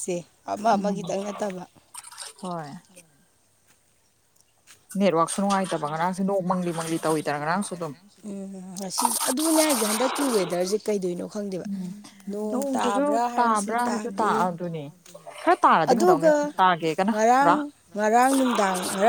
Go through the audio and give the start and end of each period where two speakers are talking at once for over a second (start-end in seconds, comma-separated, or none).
12.5-14.3